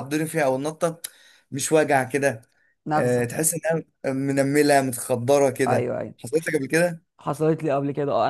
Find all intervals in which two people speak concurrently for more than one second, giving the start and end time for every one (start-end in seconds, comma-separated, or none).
none